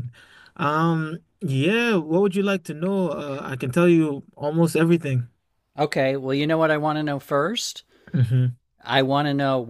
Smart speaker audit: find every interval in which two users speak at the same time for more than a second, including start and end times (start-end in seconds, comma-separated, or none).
none